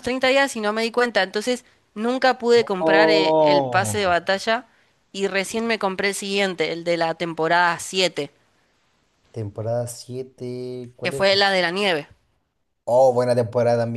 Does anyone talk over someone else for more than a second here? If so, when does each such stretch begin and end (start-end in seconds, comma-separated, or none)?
2.8-4.0